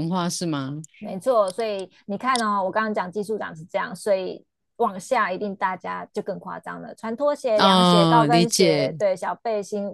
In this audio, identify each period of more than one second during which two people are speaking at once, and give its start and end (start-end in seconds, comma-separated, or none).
7.5-9.0